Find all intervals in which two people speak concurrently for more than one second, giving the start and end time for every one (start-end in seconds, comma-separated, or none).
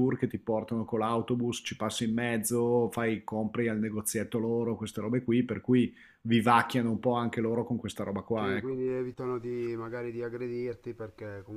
none